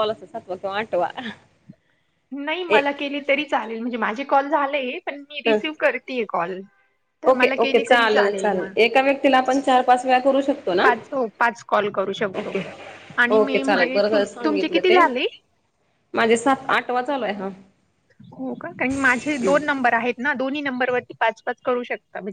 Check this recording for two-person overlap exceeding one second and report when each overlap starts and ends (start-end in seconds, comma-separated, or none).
none